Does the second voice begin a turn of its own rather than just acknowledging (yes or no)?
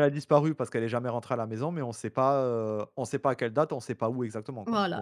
yes